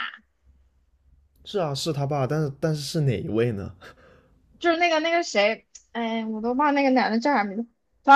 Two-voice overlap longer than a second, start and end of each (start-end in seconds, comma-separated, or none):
none